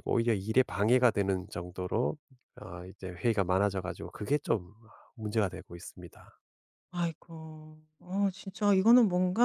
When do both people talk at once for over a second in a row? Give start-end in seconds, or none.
none